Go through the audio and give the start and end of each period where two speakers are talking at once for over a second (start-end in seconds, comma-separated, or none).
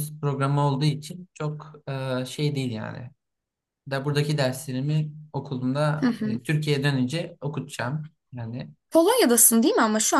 none